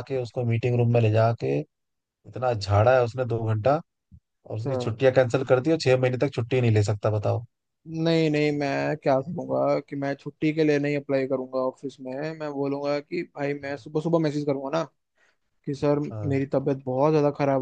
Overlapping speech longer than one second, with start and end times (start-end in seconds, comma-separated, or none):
none